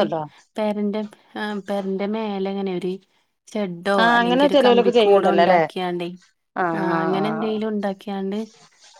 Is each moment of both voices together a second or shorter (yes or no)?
no